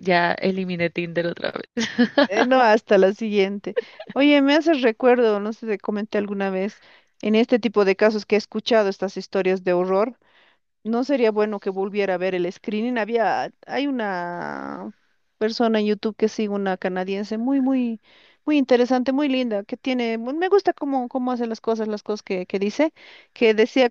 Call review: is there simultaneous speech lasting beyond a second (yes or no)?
no